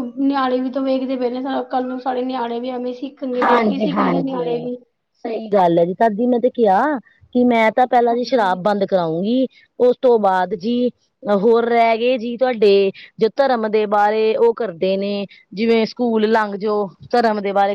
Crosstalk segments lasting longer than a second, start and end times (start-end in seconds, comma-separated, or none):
3.4-4.7